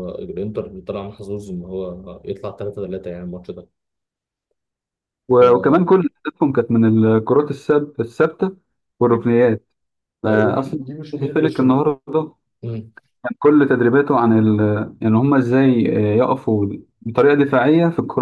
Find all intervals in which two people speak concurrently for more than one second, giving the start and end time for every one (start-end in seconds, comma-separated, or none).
10.3-11.8